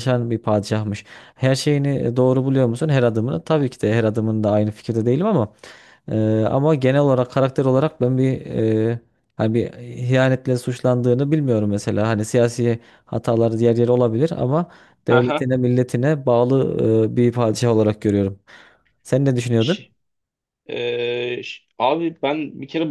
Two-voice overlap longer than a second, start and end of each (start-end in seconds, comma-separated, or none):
none